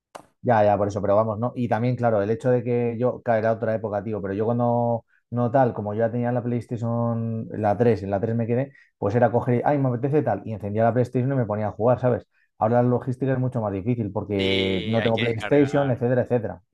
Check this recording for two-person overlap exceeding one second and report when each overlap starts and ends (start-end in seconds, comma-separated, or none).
14.4-16.1